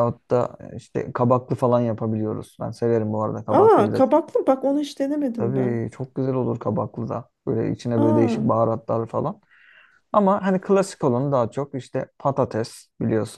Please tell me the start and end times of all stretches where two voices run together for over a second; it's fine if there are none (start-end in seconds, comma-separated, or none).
none